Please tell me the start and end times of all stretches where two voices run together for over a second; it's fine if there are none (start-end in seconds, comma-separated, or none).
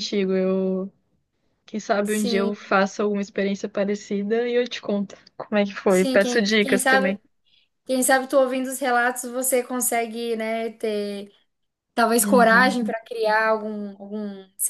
5.9-7.2